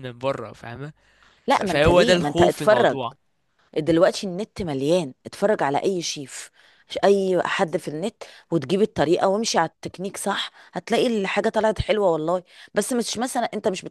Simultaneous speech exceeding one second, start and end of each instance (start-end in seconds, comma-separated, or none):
1.5-3.0